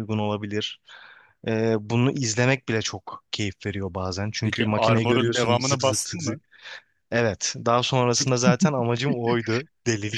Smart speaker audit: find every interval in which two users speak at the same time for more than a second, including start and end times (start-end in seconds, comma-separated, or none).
4.4-6.4